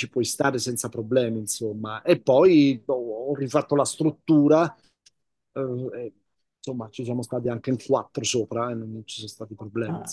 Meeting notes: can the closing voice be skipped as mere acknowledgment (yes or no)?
no